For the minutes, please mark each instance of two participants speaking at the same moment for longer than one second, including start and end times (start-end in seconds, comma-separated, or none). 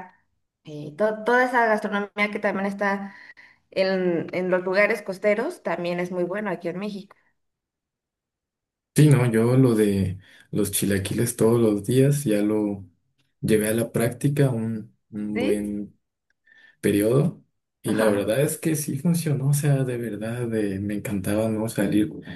none